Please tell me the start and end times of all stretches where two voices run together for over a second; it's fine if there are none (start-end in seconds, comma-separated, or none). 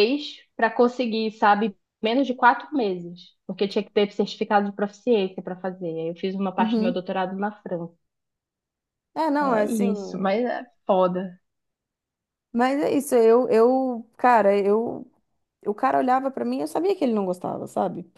none